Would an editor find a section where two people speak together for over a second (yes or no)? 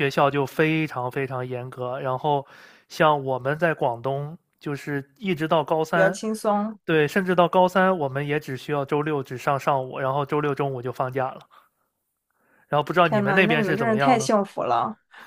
yes